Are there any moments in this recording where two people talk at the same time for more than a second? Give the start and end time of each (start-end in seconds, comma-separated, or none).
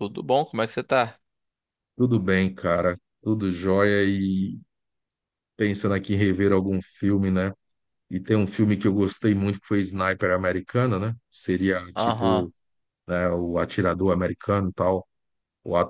none